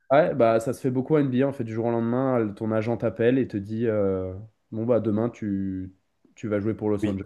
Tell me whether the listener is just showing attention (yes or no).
no